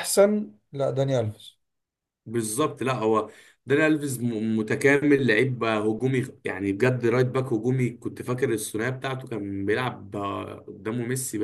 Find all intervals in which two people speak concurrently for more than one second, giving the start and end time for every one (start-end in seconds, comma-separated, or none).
none